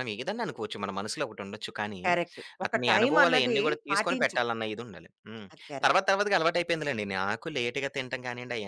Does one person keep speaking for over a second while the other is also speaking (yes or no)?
yes